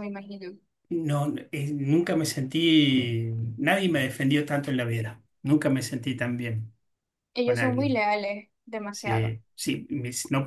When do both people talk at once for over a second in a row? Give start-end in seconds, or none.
none